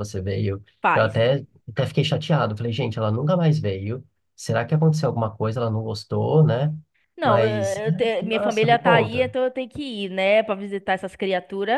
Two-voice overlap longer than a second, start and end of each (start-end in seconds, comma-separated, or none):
7.2-9.3